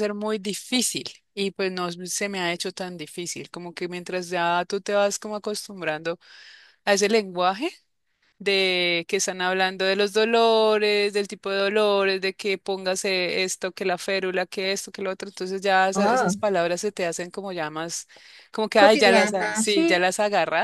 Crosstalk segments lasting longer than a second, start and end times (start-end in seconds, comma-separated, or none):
18.8-20.0